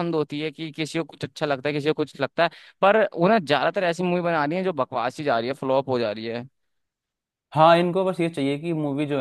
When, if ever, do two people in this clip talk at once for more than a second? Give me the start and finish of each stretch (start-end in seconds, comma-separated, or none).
none